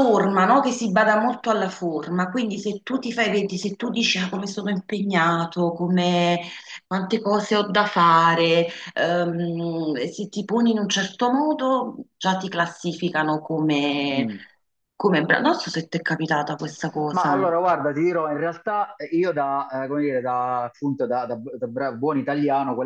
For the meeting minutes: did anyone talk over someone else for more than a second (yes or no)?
no